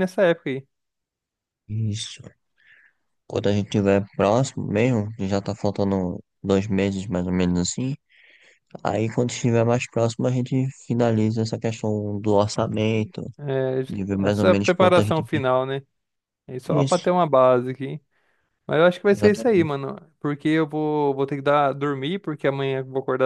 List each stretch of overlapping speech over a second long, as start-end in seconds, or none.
13.9-15.4